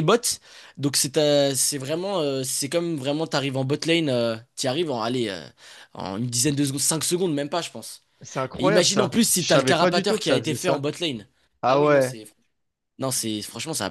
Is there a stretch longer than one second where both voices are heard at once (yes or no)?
yes